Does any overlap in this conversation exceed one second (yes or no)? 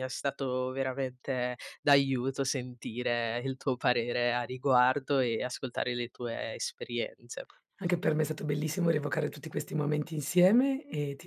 no